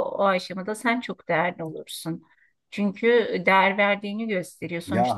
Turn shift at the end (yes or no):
yes